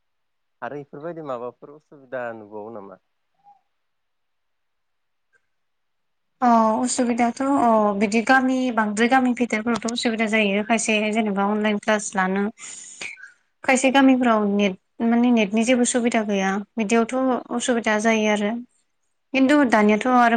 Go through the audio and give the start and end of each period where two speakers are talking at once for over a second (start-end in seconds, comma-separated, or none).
none